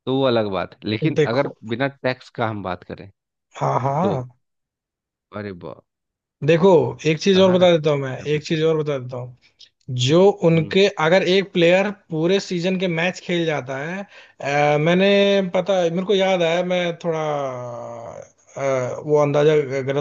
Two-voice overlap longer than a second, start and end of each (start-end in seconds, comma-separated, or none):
7.3-8.9